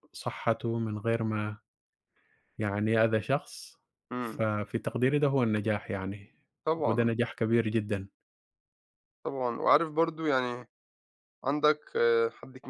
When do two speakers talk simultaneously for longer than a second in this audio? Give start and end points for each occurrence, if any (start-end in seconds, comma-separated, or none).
none